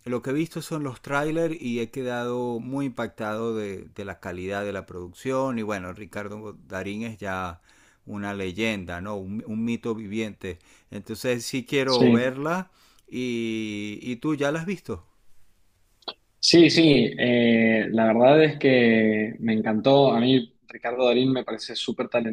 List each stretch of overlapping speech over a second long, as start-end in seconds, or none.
none